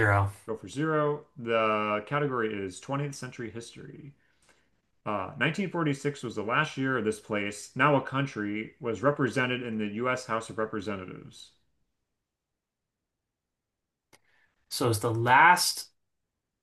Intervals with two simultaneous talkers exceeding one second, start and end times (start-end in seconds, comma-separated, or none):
none